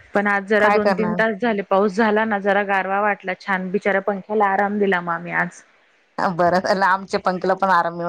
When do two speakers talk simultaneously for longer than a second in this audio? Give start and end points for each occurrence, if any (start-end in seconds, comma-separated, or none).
none